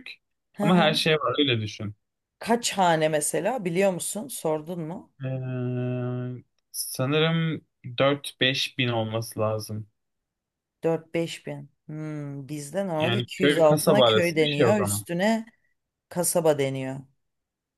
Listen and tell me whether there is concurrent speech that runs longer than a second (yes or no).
yes